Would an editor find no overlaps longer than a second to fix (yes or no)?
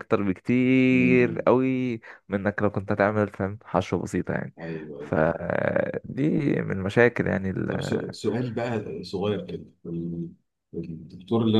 yes